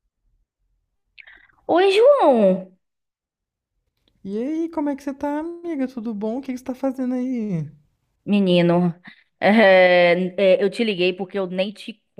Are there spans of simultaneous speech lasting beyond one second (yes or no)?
no